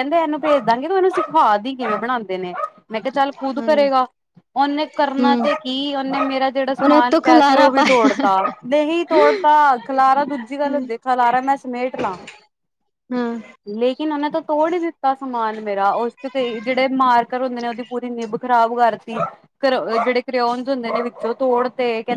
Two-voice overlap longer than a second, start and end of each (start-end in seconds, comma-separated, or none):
6.8-8.1